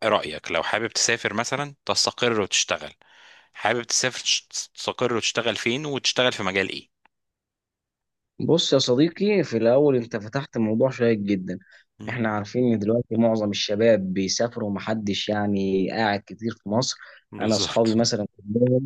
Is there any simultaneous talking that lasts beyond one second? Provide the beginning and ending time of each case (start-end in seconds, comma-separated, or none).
none